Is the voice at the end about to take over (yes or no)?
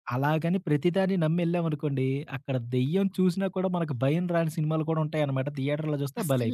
yes